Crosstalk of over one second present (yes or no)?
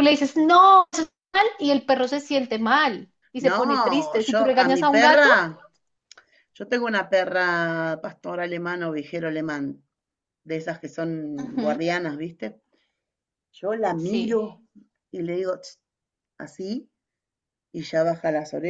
yes